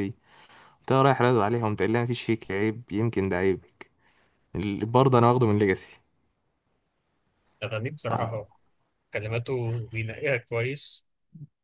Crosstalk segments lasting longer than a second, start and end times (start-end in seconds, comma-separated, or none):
none